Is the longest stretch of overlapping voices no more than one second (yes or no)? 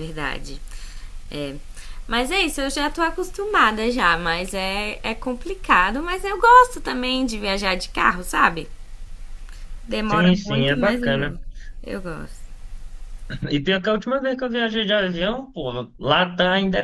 no